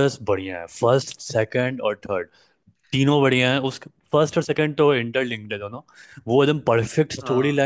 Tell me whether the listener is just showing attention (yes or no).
yes